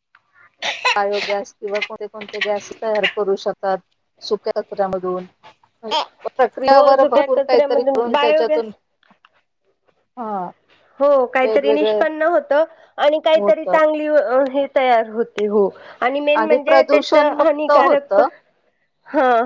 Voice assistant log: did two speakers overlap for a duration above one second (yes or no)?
yes